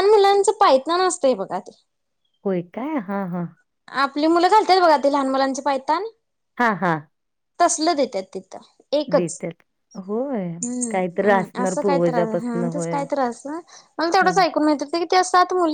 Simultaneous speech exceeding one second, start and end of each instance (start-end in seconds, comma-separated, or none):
10.6-13.0